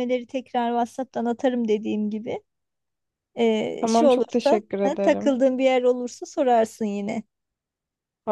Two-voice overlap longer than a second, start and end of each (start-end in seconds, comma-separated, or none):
3.8-5.4